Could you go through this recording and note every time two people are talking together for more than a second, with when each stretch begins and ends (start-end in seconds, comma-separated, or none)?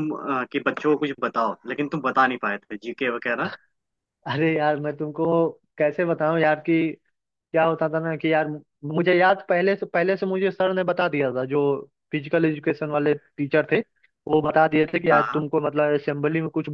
none